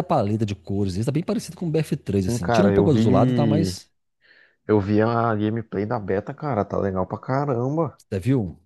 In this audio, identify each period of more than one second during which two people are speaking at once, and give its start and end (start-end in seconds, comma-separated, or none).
2.2-3.8